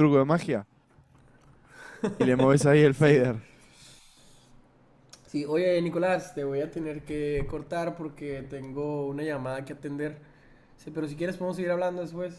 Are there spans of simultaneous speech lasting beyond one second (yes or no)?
no